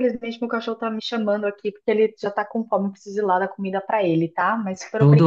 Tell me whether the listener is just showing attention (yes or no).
no